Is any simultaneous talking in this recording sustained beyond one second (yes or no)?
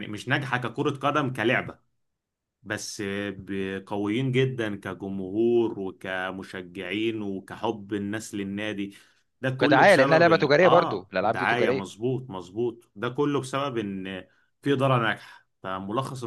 yes